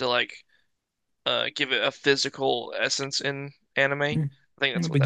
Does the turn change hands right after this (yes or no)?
yes